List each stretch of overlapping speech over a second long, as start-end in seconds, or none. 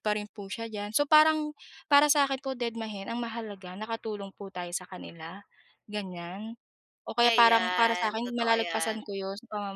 7.3-9.0